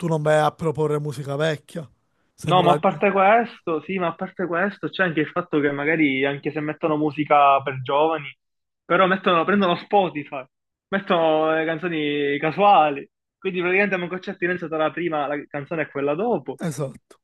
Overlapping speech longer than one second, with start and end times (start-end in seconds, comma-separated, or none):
none